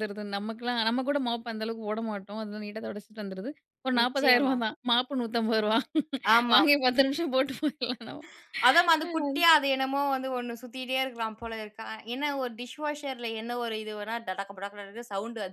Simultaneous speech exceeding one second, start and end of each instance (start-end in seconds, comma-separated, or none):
none